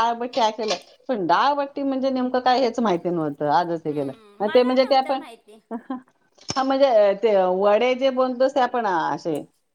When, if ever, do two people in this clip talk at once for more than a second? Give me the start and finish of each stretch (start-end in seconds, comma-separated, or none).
3.9-5.2